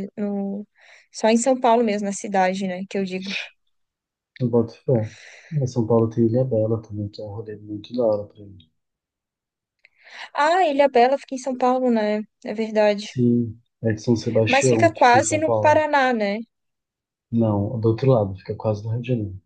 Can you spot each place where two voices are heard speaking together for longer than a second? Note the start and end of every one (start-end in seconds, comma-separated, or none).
14.5-15.8